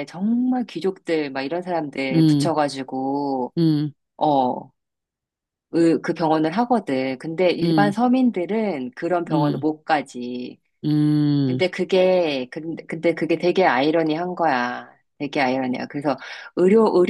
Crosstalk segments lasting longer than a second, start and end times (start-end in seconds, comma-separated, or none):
none